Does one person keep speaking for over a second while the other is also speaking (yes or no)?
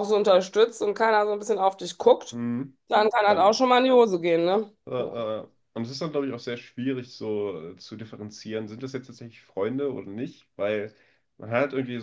no